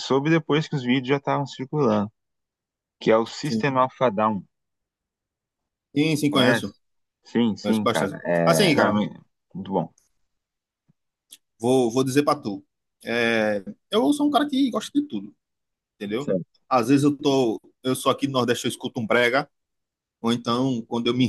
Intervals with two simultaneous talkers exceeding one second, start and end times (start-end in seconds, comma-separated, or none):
7.6-9.0